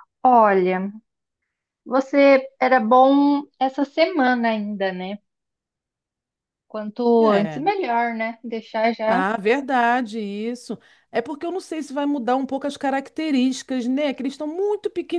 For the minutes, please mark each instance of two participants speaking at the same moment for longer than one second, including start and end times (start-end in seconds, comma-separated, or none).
none